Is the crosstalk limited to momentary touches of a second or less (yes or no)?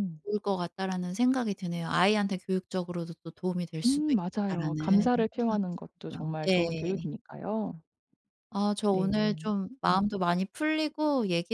no